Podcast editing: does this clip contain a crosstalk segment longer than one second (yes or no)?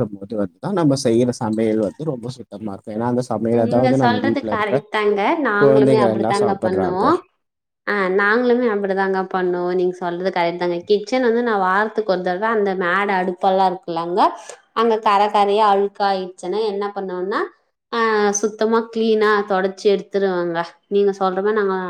yes